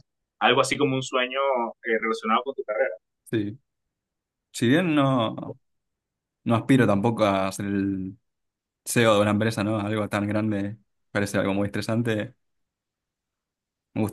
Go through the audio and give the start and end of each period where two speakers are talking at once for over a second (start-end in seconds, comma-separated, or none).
none